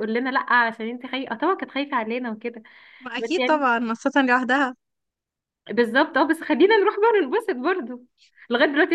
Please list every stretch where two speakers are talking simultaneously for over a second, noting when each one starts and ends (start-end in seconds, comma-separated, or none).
none